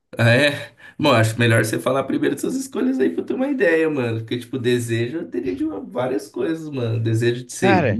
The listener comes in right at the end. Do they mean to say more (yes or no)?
no